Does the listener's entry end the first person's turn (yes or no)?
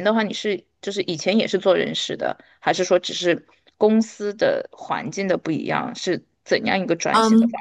yes